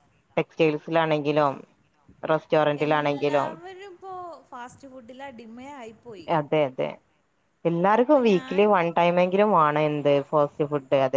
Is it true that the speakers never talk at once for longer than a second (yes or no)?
yes